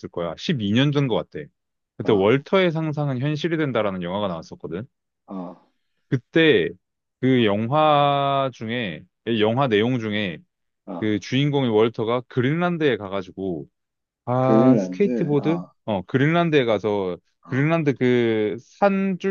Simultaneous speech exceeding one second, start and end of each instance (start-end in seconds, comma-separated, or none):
14.4-15.7